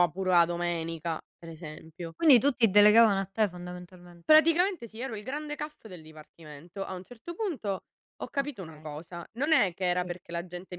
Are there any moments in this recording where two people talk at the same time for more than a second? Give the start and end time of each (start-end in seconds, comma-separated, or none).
none